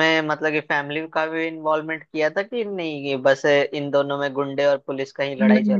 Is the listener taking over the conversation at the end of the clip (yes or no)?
yes